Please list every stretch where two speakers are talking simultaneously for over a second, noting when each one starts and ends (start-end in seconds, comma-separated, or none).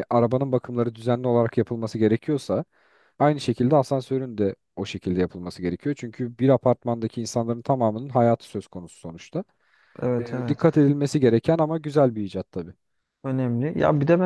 none